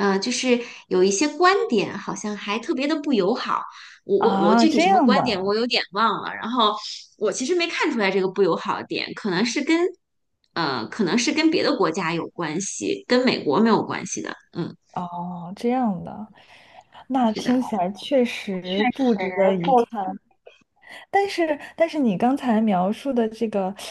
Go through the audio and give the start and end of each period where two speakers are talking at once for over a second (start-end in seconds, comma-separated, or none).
4.2-5.5